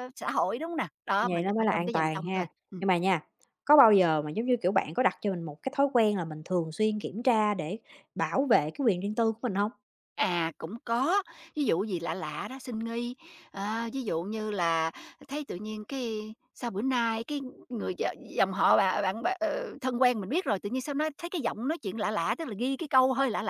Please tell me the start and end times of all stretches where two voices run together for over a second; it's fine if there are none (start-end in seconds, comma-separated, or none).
1.2-2.8